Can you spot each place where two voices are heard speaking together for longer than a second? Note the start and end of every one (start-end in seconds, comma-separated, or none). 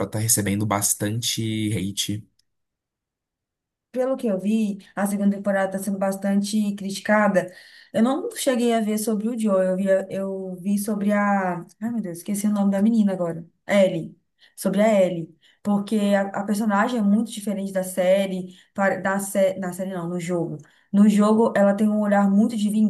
none